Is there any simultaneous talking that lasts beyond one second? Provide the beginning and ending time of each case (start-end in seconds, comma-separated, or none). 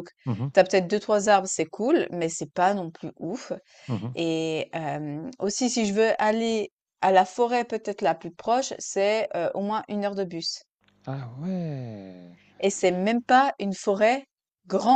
none